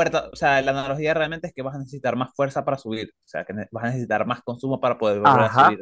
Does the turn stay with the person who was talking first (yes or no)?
no